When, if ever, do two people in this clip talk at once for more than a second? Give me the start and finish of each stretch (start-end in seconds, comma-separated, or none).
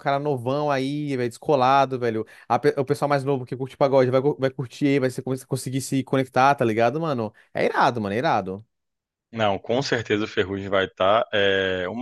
none